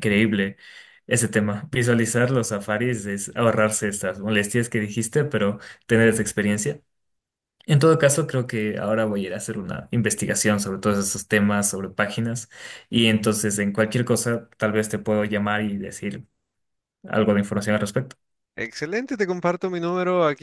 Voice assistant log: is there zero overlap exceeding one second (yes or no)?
yes